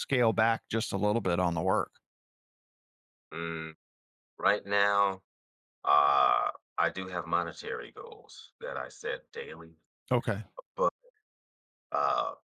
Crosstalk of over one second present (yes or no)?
no